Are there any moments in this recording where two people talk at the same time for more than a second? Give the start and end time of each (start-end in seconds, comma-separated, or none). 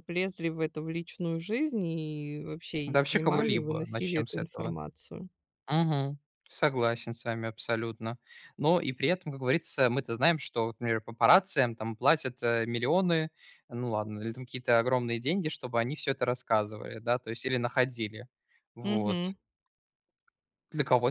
2.9-4.8